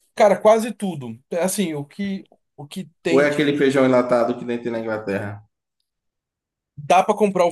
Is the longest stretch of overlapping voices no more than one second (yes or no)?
yes